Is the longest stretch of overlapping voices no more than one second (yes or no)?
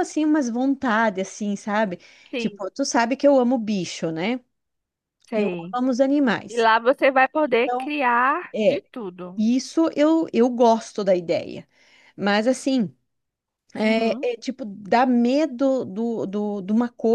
yes